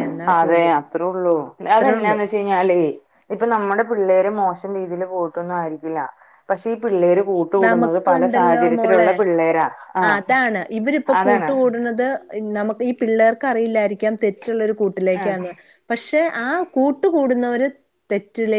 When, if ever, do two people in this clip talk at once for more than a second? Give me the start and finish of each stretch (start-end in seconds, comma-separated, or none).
7.7-9.1